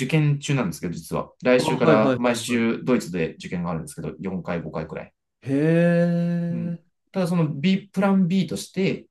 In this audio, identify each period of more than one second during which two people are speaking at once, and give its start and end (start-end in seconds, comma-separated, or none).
1.6-2.8